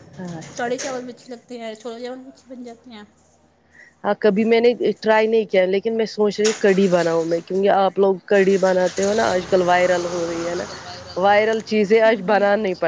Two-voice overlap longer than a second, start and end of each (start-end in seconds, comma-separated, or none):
none